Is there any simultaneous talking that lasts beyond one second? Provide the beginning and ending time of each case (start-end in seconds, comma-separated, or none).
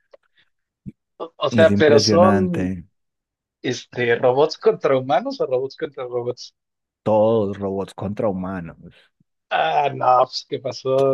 1.5-2.8